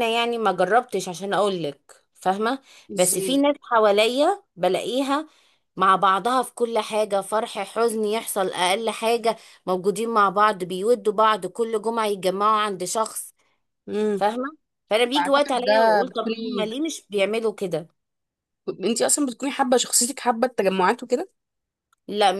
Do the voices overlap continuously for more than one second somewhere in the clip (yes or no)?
yes